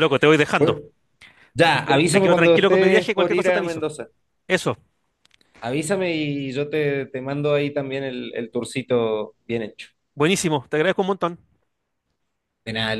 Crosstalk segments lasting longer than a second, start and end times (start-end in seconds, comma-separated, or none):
1.6-3.8